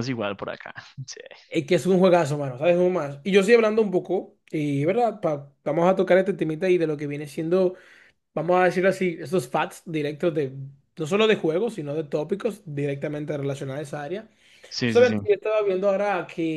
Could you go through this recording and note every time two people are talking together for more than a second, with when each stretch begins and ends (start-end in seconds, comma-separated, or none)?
none